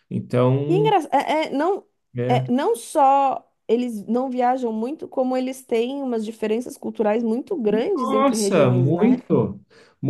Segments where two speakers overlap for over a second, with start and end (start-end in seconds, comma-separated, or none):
8.0-9.2